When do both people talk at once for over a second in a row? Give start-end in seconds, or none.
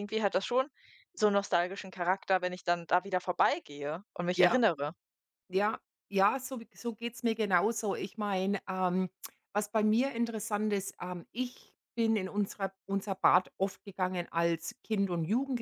none